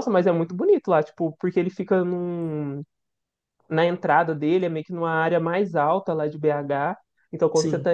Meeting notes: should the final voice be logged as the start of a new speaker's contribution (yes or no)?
no